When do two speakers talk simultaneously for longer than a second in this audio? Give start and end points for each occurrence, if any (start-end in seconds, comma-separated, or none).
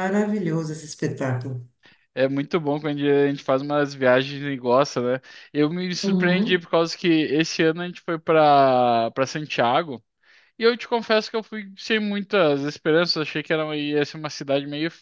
none